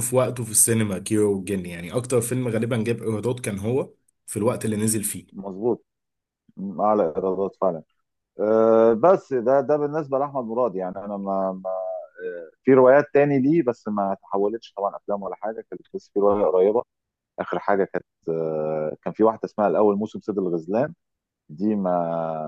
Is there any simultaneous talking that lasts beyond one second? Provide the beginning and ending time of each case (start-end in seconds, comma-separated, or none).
none